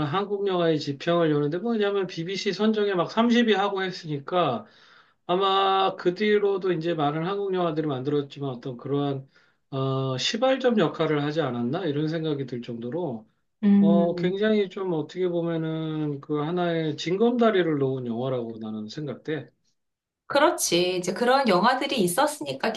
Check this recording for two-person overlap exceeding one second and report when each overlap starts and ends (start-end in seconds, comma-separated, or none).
none